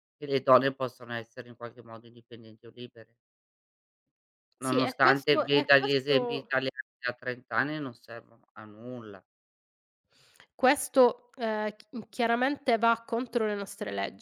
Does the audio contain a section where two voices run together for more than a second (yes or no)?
yes